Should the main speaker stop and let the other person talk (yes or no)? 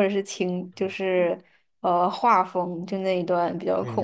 yes